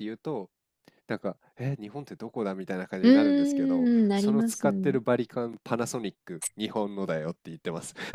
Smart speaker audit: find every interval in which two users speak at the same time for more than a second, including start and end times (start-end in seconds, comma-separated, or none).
3.0-4.7